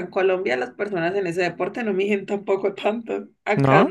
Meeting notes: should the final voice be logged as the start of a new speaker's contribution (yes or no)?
no